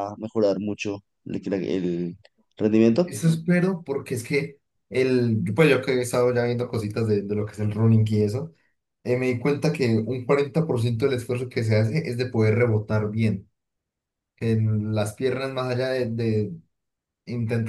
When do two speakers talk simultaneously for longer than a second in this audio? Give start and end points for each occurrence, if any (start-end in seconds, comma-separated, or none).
none